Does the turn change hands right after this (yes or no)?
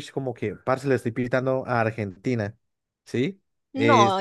yes